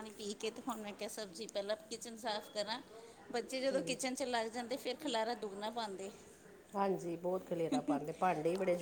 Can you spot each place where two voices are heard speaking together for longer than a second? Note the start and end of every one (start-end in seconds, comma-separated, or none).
none